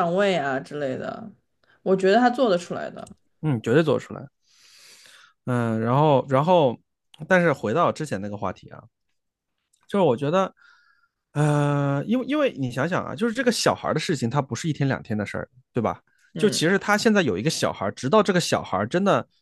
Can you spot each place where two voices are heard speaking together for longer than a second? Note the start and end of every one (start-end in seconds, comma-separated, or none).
none